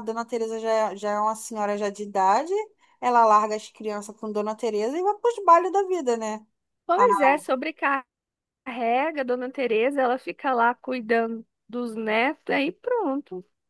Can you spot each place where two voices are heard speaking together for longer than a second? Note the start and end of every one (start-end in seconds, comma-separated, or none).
none